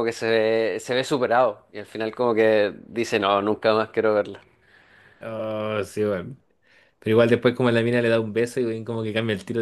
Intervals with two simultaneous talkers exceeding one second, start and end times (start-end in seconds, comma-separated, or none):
none